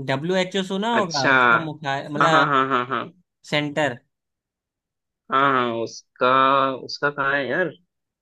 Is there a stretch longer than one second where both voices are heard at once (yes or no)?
no